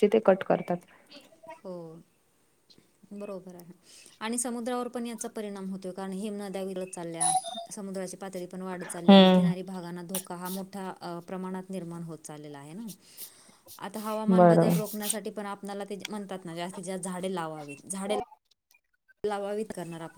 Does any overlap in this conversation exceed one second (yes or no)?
no